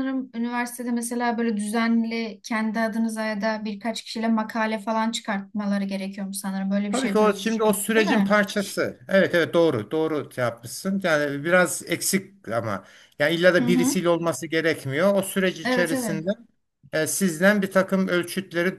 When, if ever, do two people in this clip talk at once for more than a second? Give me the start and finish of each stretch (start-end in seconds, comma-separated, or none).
6.9-8.4